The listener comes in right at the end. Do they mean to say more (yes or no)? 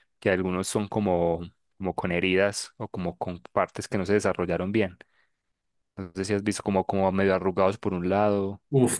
yes